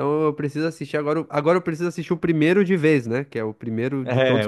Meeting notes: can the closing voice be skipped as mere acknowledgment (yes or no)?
no